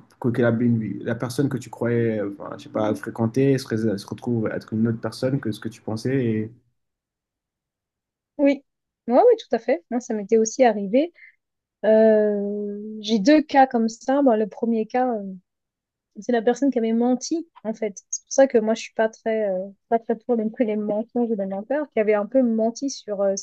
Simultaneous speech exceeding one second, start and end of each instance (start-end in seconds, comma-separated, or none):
none